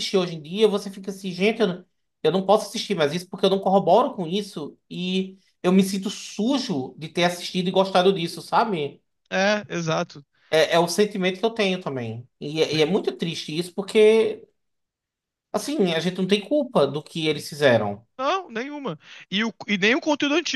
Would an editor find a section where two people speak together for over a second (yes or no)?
no